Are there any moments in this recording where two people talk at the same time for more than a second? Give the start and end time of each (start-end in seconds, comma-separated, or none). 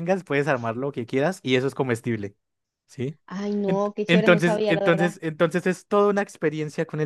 3.6-5.2